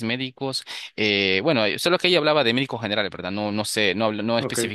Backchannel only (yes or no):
yes